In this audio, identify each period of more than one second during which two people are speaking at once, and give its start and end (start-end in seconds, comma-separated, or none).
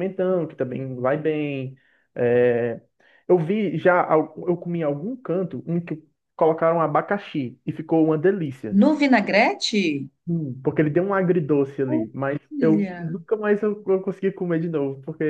11.9-13.2